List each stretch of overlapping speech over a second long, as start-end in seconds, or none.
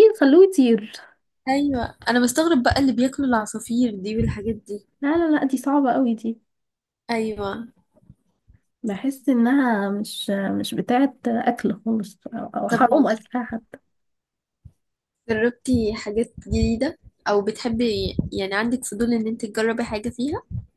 none